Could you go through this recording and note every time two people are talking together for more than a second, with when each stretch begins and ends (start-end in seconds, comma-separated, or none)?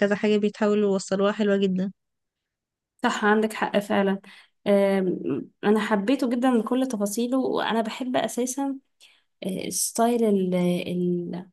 none